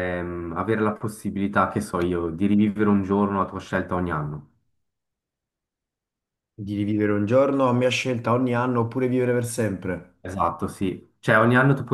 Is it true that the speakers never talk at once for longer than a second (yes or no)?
yes